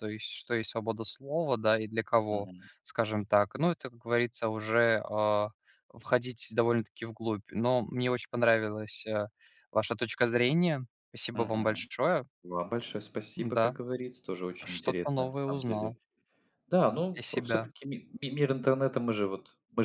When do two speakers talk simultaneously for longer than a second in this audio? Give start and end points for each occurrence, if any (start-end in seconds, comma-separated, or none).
14.7-15.9